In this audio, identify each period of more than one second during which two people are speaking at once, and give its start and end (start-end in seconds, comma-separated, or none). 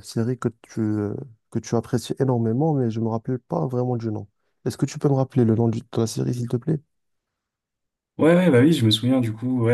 none